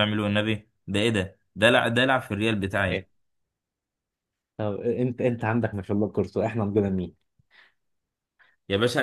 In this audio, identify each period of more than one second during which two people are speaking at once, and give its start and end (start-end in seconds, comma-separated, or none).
none